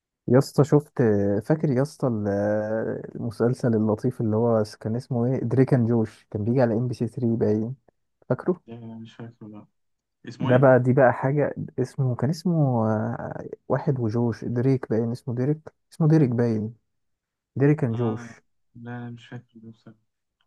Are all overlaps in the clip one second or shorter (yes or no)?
yes